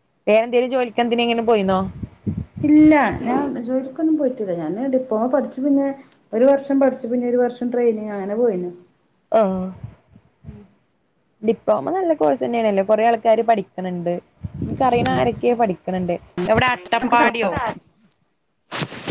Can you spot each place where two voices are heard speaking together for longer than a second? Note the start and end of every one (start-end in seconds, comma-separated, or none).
none